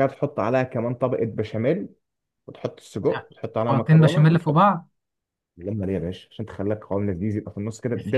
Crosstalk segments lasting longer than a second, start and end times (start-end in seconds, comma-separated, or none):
3.1-4.7